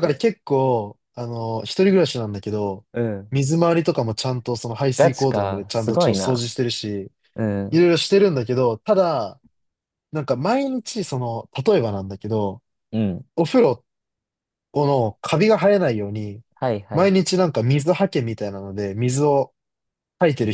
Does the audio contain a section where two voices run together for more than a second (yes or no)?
yes